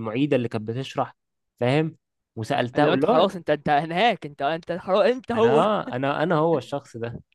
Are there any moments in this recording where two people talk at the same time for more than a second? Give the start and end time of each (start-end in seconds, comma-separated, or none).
none